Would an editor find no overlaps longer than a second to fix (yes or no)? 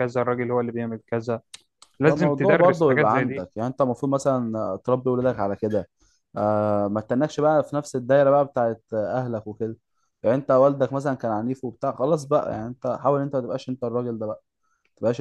no